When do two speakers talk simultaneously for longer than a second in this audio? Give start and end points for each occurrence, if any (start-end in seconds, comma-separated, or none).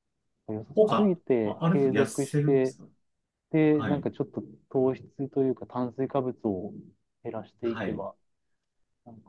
0.7-2.8